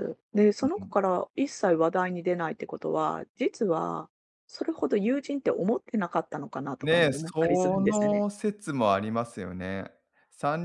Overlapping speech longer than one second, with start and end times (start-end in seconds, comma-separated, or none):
6.8-8.2